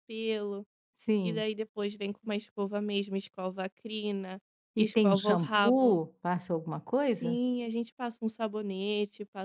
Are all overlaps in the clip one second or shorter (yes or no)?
no